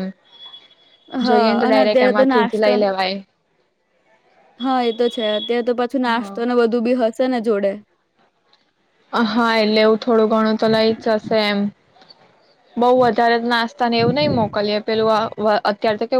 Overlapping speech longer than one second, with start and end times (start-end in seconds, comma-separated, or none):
1.2-2.8